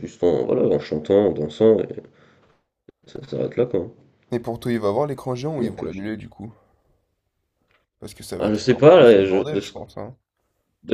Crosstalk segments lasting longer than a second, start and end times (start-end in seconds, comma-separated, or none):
8.4-9.7